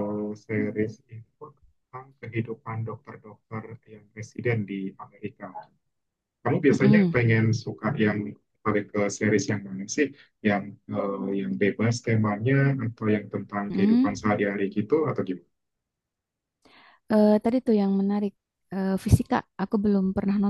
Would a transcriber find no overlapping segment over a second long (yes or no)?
yes